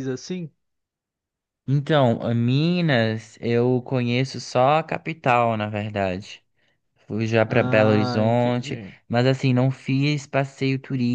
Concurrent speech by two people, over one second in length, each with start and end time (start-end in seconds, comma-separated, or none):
7.5-8.9